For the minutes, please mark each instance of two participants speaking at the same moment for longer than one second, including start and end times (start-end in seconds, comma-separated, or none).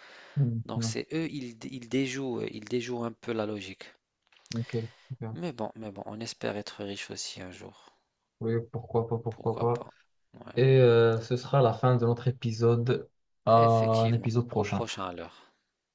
13.5-14.9